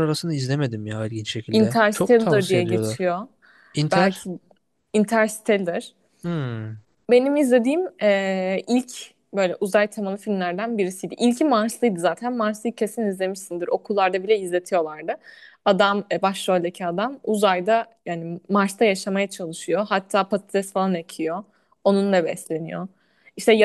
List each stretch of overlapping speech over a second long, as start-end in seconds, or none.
1.5-3.1